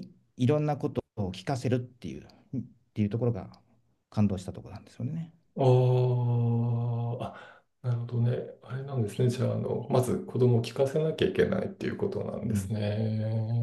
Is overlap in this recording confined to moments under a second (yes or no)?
yes